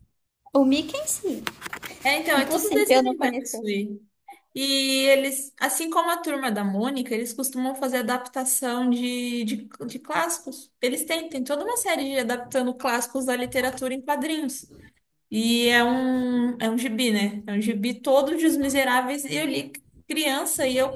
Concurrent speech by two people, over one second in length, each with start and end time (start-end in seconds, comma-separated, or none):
2.4-3.6